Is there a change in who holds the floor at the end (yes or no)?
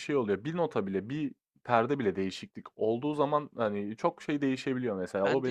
yes